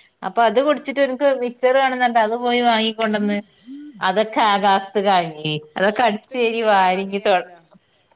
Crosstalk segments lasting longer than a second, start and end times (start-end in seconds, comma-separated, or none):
6.0-7.4